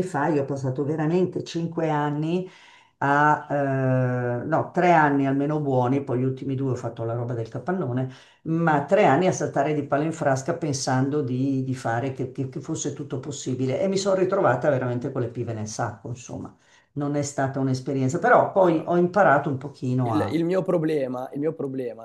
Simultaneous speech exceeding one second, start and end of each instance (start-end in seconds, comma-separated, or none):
none